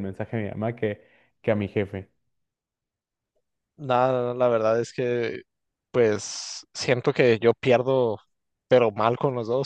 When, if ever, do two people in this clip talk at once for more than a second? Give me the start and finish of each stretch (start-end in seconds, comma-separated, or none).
none